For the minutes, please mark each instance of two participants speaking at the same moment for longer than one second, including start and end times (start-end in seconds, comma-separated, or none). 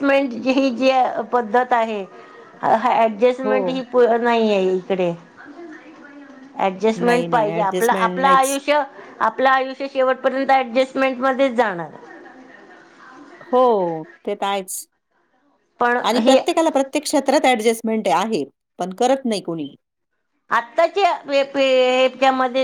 7.0-8.6